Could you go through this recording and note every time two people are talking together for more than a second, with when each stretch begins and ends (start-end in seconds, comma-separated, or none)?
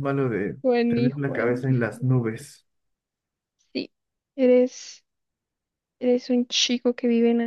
0.6-2.1